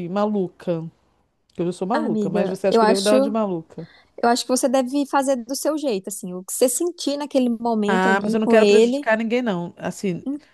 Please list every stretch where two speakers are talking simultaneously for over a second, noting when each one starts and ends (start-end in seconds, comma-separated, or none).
1.9-3.7, 7.8-9.1